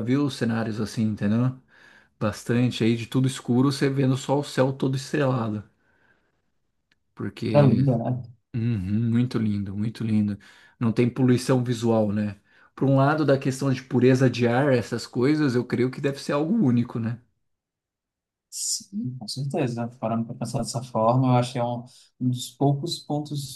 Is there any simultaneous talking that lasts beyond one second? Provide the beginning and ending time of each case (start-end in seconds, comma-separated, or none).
none